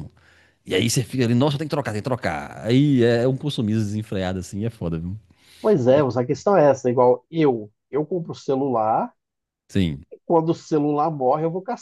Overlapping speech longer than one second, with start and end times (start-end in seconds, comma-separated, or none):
none